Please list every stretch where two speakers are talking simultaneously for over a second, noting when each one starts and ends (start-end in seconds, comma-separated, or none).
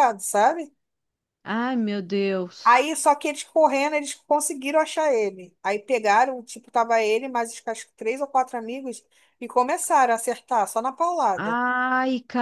none